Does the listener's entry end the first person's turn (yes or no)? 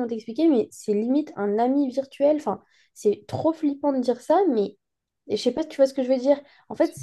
no